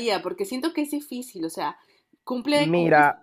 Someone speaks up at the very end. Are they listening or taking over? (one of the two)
listening